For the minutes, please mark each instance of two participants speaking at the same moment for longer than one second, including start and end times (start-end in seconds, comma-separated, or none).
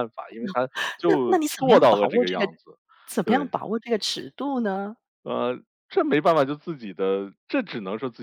1.1-2.5